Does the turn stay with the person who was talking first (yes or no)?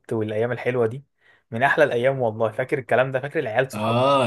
no